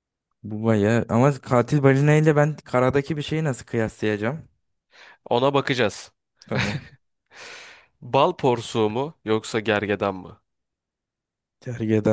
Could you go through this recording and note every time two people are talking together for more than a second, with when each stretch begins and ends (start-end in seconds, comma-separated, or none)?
none